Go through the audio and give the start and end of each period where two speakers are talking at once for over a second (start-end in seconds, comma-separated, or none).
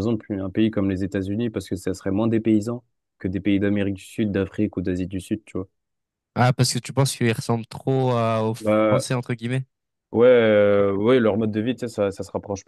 none